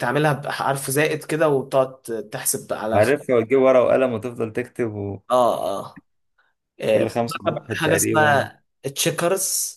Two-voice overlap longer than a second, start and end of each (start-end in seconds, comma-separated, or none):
7.1-8.5